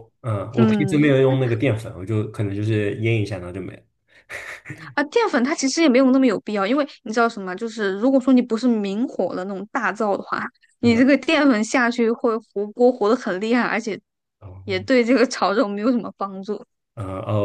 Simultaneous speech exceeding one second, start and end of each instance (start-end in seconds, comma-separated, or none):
none